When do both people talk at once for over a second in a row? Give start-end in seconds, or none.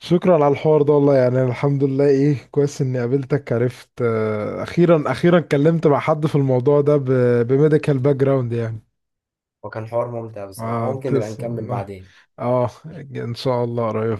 10.6-11.9